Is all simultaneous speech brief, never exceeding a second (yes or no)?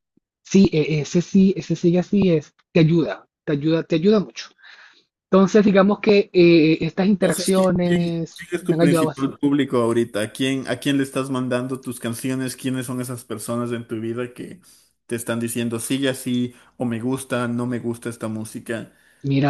no